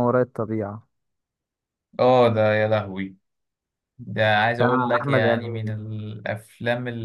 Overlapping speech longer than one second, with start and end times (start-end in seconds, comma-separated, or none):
4.5-5.7